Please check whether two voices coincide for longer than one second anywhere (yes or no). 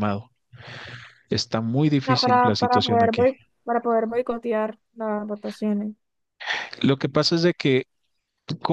yes